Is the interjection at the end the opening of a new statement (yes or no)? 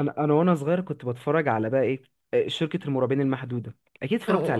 yes